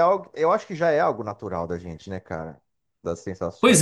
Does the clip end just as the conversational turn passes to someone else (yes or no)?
yes